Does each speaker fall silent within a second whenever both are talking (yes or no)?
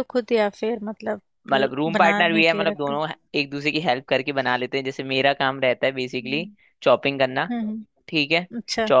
no